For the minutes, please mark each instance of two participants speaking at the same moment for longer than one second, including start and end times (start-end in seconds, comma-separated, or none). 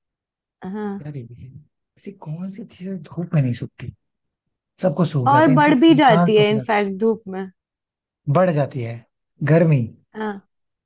5.3-6.7